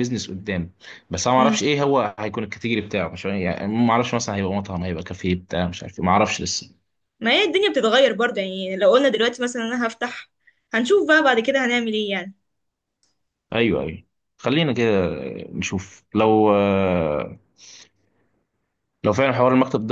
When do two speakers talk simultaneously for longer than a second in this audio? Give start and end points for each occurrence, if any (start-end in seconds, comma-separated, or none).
none